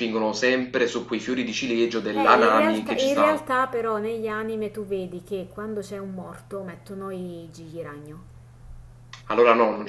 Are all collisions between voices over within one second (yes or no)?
no